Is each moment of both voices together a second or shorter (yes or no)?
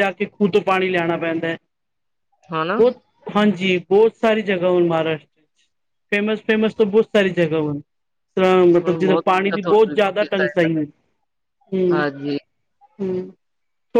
no